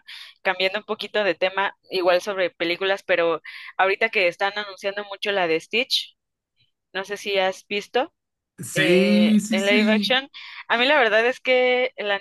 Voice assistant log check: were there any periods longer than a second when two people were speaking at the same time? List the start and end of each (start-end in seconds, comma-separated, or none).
8.8-10.2